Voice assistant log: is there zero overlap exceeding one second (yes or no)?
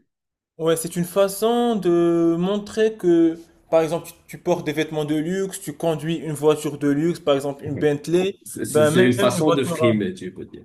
no